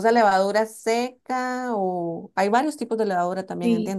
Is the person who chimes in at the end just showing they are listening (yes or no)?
no